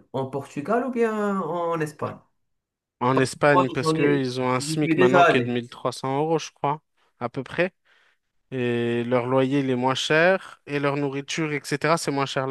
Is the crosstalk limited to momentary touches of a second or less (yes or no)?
no